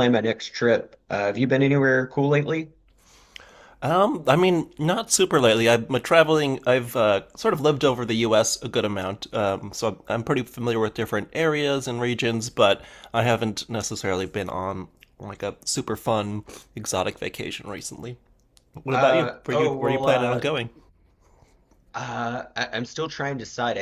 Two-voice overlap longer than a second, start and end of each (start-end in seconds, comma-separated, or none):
18.9-20.4